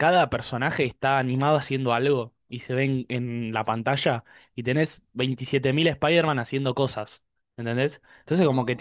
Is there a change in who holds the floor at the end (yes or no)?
no